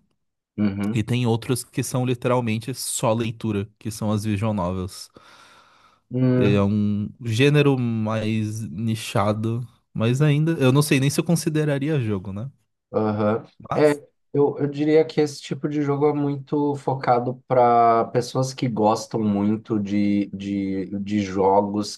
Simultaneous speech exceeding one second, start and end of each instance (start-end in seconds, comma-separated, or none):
none